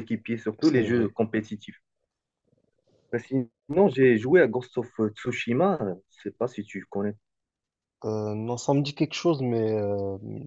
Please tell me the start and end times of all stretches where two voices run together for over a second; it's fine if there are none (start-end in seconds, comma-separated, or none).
none